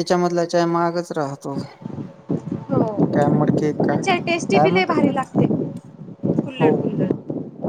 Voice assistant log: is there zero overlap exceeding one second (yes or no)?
no